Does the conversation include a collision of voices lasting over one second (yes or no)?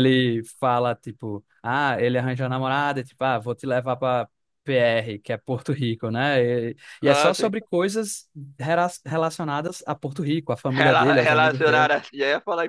yes